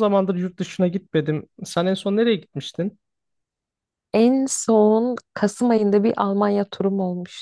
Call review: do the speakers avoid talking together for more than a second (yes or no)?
yes